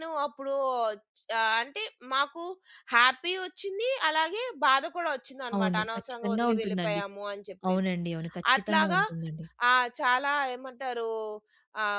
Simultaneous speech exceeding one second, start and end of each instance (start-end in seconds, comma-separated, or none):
5.6-7.0